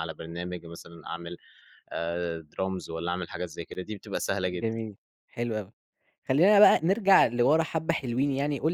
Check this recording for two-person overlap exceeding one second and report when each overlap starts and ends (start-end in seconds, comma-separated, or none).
none